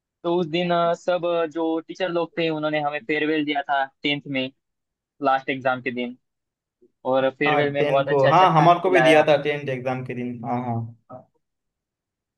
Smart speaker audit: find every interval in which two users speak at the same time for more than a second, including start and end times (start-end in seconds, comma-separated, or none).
7.5-9.3